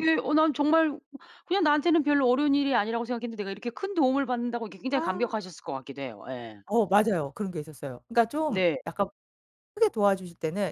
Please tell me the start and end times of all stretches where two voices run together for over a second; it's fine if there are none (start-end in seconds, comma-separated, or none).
none